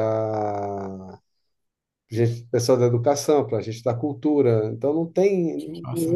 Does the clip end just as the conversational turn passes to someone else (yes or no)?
no